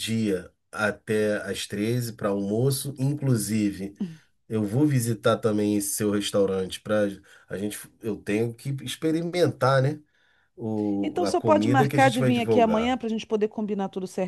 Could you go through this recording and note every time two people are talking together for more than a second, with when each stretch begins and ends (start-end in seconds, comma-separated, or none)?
11.0-13.0